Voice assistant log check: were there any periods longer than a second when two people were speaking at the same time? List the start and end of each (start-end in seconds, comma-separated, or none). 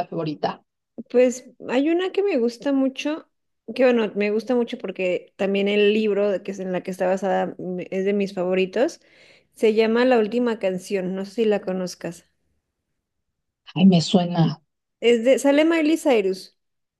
none